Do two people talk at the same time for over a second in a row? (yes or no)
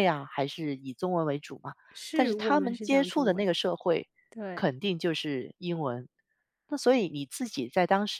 yes